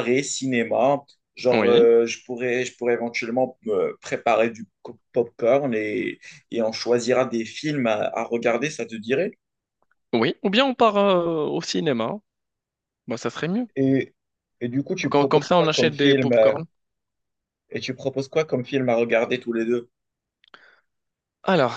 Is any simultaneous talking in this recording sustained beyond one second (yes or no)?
yes